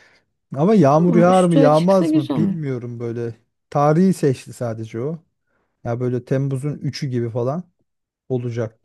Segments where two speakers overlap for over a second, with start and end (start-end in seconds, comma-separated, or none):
0.9-2.6